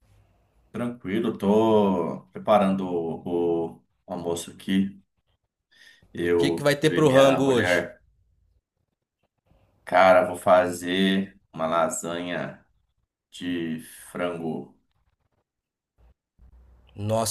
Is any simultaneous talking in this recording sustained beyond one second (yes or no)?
yes